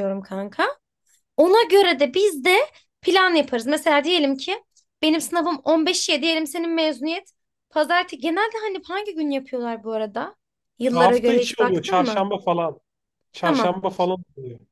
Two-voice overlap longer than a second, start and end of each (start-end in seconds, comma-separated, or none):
10.9-12.3